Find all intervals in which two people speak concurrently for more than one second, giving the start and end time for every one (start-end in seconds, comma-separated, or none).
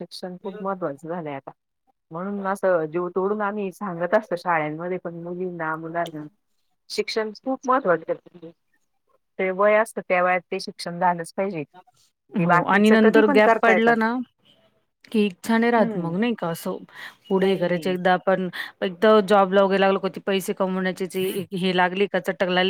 12.4-13.9